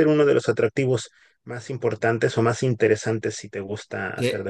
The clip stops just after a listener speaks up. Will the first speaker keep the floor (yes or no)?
no